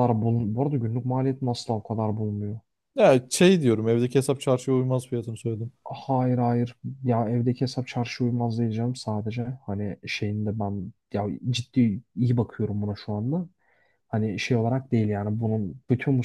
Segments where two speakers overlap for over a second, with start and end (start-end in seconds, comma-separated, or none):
none